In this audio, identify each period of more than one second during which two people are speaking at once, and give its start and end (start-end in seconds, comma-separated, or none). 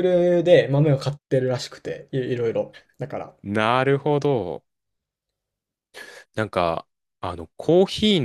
none